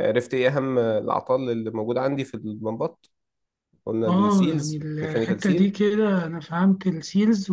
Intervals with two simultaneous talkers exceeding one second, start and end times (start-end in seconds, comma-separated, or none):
4.1-5.7